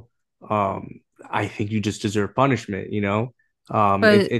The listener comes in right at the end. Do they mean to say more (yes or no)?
yes